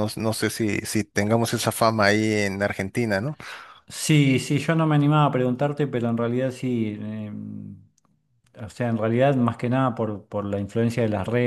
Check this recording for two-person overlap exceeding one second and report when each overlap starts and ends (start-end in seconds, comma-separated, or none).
none